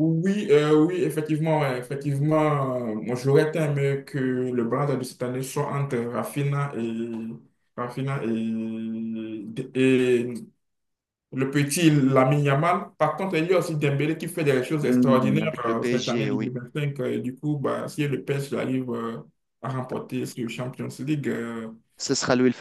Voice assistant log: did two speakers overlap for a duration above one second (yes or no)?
yes